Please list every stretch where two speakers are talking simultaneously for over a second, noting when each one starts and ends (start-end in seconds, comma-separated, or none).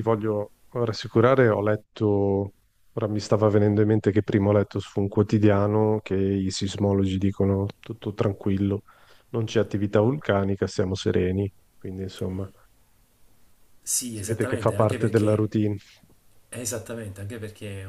14.1-15.5